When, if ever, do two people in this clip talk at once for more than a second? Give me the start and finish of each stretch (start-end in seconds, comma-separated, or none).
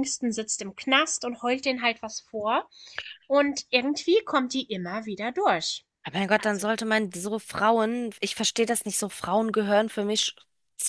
none